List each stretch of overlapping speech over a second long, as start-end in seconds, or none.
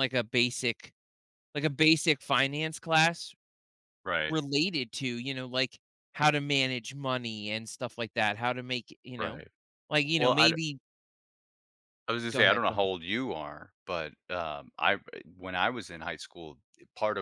none